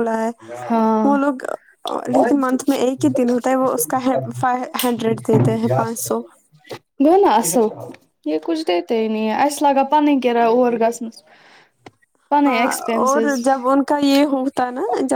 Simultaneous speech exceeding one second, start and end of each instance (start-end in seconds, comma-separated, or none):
none